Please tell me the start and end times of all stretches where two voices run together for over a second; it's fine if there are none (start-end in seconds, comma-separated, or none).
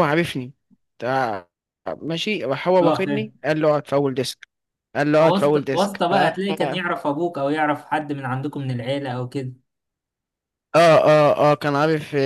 5.2-6.9